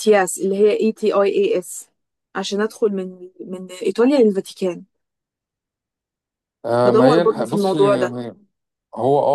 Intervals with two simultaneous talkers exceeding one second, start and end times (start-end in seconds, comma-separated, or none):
6.9-8.2